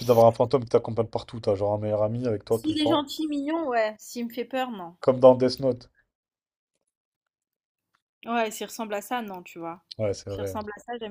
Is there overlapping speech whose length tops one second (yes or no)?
no